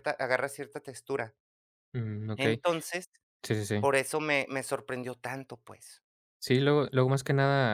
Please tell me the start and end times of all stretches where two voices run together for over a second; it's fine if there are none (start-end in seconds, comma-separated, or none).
none